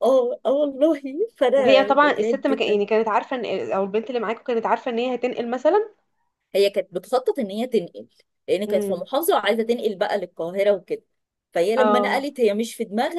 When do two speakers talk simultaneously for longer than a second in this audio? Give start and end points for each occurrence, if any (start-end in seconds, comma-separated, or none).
1.6-2.8